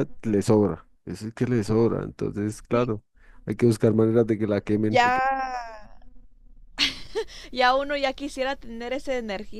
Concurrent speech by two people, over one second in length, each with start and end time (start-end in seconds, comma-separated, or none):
none